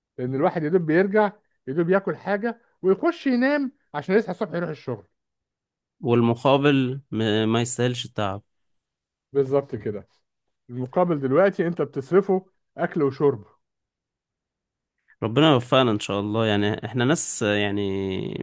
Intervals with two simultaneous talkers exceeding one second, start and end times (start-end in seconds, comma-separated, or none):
none